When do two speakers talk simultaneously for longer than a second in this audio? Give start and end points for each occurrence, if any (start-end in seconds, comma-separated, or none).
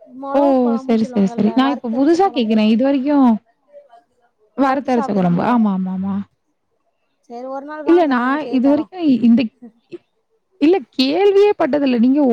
1.0-2.6